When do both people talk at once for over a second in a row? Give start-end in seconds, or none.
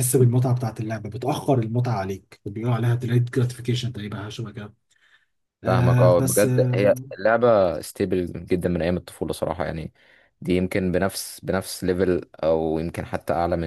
5.7-7.1